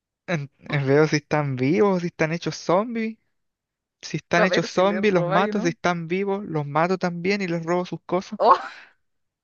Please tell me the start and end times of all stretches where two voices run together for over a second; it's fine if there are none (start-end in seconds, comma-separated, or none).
4.3-5.8